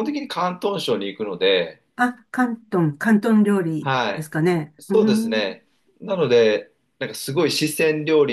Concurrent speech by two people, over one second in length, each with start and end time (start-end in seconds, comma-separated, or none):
3.8-5.6